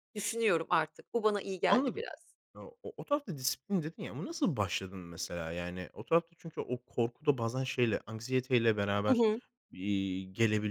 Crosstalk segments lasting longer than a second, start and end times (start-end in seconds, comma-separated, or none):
none